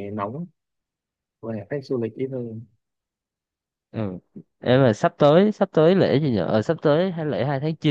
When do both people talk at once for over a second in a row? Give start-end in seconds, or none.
none